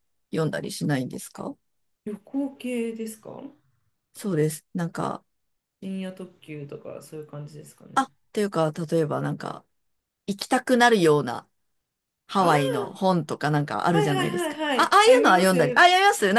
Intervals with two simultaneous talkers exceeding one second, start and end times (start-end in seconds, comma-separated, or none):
13.9-15.8